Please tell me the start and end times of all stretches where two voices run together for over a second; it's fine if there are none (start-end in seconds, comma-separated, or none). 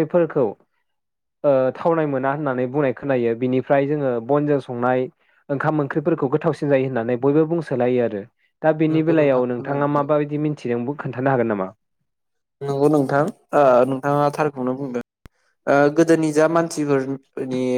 8.9-10.3